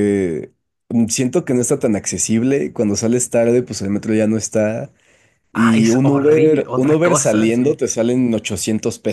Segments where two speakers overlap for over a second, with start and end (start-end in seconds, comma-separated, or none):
5.5-7.8